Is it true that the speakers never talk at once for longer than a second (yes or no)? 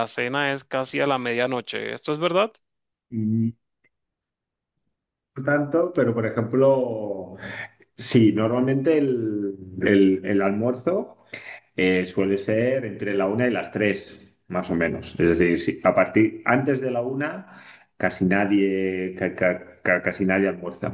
yes